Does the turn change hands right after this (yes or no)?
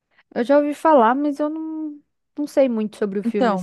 yes